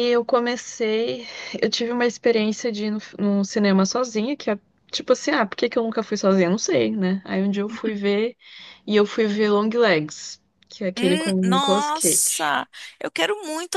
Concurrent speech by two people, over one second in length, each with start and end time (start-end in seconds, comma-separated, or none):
10.9-12.5